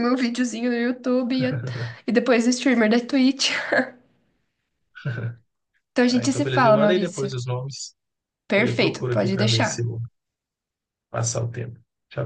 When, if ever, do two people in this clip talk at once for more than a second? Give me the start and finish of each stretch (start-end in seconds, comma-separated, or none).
6.1-7.3, 8.6-9.9